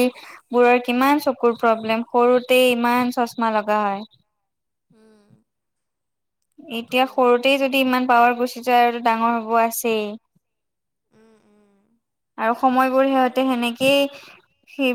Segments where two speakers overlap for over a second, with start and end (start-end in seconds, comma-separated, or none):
7.7-9.6